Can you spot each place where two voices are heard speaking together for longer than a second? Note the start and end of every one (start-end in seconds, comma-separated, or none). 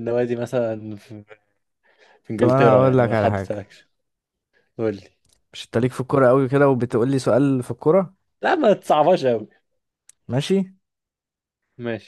2.4-3.7